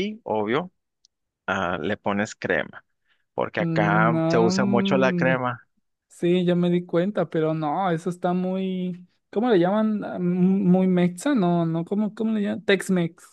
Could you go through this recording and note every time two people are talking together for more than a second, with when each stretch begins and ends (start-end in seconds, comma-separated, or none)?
3.6-5.4